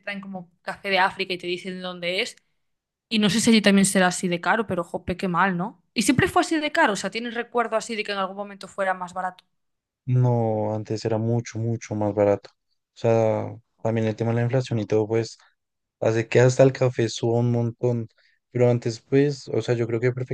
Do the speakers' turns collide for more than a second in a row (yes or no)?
no